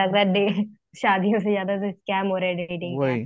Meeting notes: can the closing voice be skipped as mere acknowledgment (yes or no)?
no